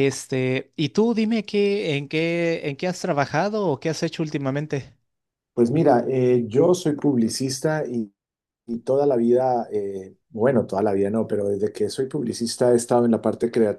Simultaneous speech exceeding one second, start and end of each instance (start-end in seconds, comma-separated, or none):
none